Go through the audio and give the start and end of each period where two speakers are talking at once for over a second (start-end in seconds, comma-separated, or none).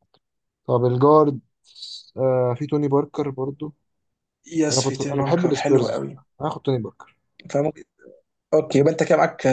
4.7-6.0